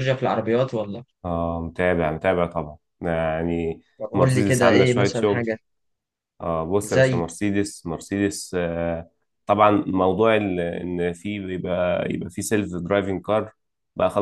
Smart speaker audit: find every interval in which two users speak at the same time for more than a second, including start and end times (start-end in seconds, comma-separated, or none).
4.0-5.5